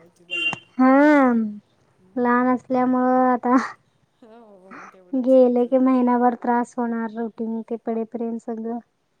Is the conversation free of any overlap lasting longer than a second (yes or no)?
yes